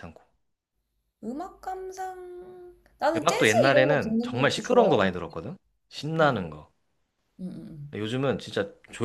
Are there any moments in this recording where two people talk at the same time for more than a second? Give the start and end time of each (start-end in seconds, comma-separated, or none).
3.1-5.0